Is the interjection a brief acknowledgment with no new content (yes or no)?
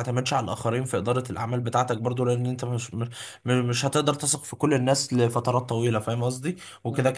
yes